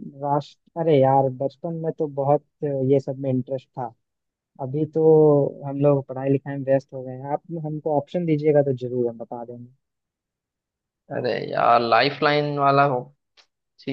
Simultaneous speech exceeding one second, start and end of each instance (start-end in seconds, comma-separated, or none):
none